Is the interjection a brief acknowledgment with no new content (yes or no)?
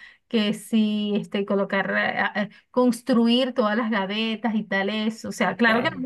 yes